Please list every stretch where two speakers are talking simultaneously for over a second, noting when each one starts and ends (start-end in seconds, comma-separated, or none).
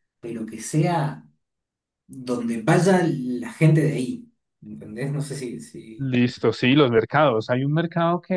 none